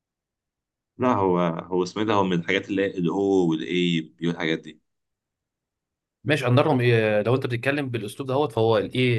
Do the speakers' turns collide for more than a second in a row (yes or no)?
no